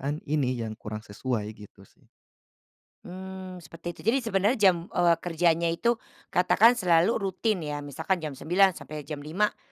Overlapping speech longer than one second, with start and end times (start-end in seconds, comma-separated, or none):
none